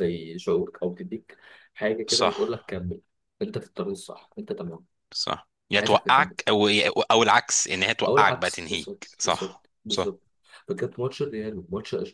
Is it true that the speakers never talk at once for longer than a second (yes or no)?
no